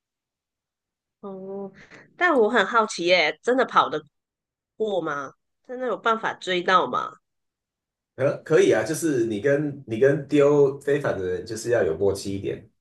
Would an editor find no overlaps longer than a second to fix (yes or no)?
yes